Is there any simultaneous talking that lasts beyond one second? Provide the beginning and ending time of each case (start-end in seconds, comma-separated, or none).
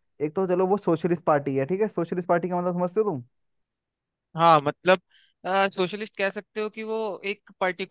none